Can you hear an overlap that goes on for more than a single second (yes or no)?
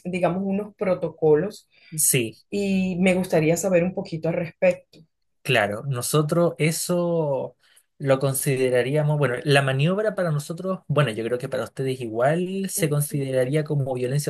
no